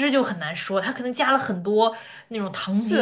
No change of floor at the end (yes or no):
no